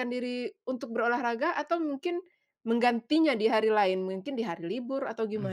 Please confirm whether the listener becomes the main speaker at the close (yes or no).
yes